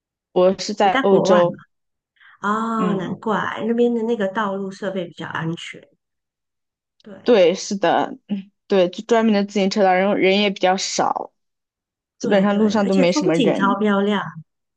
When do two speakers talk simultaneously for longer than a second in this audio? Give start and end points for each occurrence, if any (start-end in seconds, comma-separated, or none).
12.2-13.8